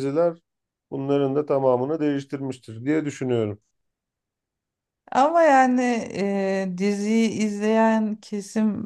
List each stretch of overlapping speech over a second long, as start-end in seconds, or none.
none